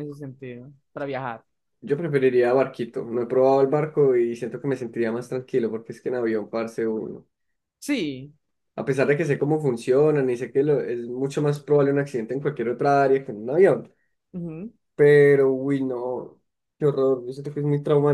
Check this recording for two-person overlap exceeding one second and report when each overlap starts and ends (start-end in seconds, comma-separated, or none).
none